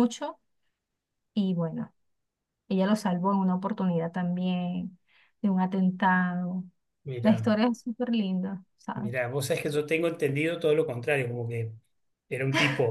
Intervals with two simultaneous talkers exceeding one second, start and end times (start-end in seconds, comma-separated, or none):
none